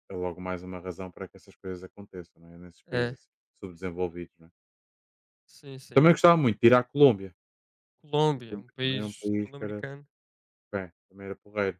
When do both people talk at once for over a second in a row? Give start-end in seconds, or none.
8.4-9.8